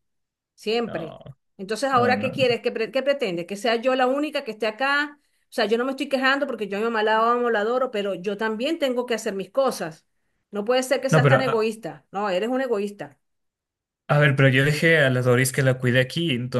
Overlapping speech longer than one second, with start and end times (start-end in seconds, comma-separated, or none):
none